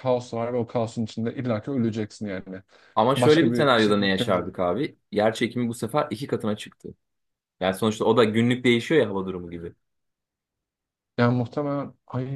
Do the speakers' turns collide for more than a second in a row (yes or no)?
yes